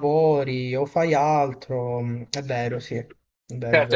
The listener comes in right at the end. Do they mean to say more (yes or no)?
yes